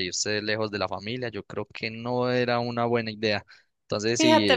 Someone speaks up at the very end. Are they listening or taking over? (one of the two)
taking over